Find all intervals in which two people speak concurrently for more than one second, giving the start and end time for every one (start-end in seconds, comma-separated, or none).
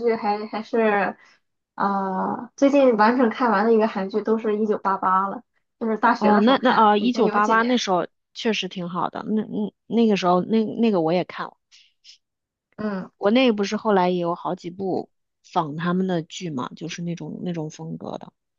6.2-7.9